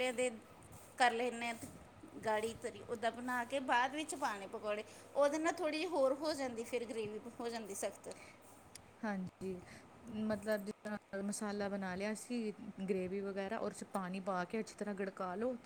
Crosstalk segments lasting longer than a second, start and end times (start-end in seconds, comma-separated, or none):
none